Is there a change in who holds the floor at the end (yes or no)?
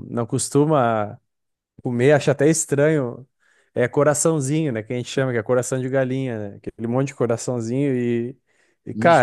no